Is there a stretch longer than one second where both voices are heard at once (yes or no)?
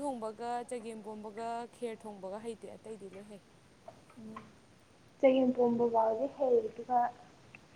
no